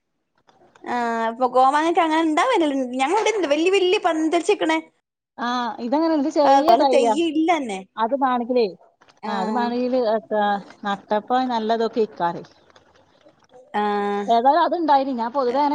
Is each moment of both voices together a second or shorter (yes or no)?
yes